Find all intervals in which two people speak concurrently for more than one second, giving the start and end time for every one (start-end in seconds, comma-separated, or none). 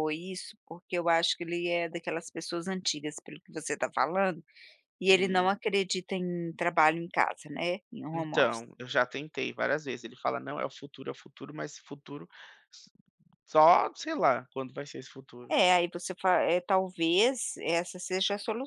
none